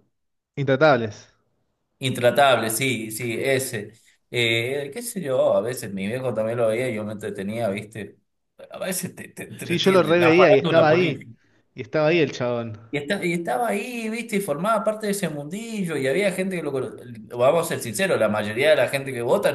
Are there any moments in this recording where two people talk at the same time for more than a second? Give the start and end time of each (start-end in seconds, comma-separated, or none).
9.6-11.3